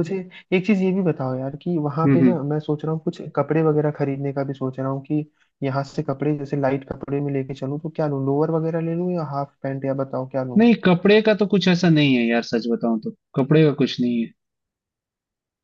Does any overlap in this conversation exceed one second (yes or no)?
no